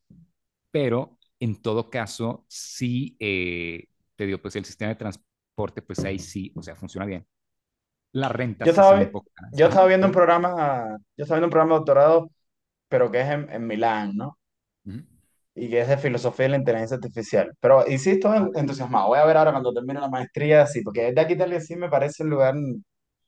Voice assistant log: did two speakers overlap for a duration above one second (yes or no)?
yes